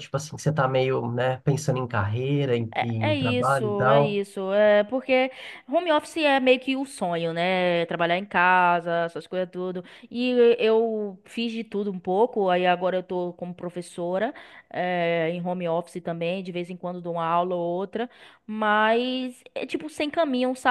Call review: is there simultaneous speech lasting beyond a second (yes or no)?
yes